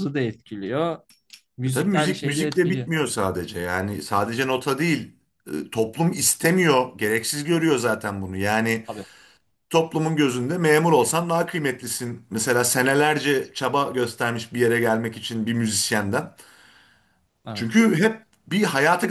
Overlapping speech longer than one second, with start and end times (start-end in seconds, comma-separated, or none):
1.6-2.9